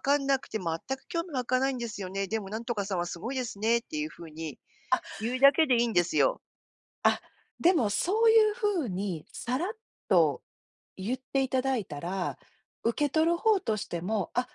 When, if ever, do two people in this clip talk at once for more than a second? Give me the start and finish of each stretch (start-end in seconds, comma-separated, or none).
none